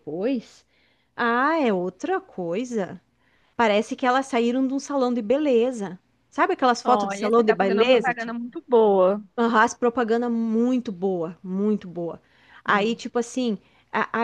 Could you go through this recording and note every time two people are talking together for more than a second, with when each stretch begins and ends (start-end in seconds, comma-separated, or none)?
6.8-8.1